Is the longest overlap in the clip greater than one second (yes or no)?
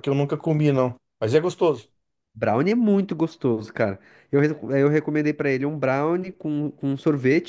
no